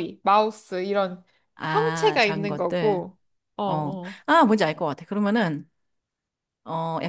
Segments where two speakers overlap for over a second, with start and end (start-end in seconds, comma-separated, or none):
1.7-3.0